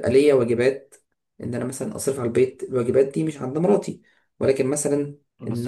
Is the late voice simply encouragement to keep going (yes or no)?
no